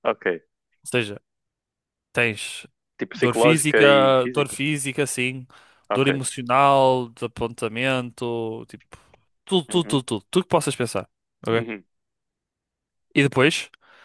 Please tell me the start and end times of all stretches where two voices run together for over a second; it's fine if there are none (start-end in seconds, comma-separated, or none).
3.1-4.6